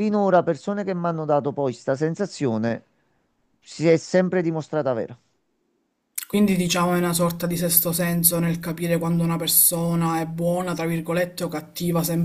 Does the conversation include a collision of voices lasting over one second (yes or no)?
no